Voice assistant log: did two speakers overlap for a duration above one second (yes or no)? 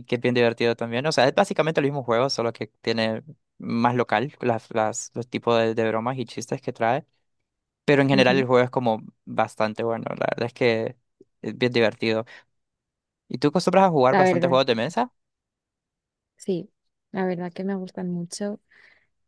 no